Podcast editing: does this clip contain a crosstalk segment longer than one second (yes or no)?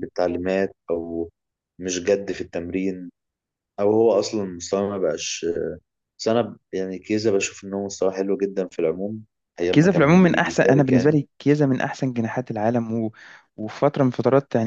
yes